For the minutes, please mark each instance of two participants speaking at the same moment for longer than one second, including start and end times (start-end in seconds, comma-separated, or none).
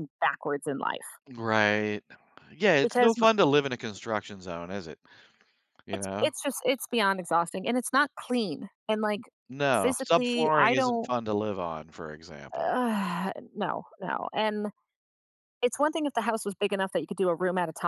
9.8-11.1